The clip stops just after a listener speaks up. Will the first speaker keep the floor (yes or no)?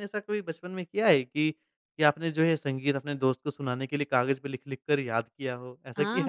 no